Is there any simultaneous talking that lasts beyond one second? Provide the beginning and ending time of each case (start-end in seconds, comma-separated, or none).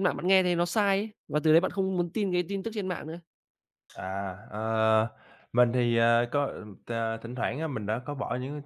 none